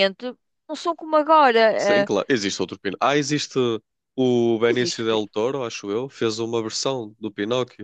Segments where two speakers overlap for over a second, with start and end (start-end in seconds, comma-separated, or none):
none